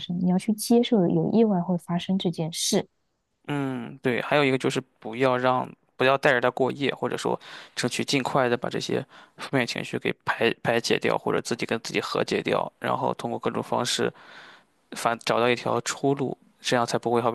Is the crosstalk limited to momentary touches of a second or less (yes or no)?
yes